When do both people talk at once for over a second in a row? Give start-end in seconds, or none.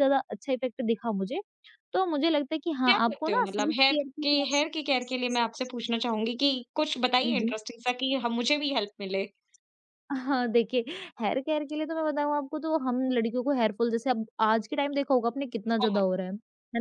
2.9-4.6